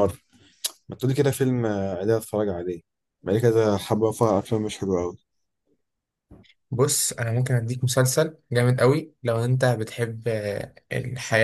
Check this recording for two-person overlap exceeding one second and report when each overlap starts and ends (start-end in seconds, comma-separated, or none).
none